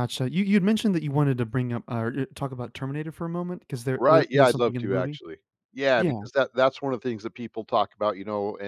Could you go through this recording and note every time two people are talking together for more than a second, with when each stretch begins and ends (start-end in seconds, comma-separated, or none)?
4.0-5.2